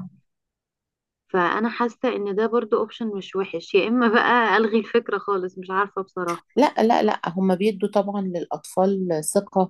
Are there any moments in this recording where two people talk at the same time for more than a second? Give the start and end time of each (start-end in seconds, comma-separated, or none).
none